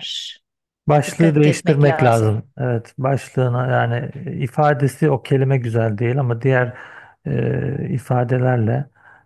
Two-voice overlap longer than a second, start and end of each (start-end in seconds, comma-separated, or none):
1.1-2.3